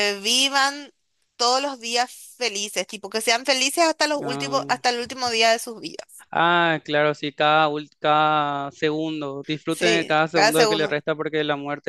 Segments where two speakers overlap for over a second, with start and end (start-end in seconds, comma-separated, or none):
9.7-11.0